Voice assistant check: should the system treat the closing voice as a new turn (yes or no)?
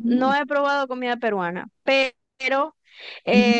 no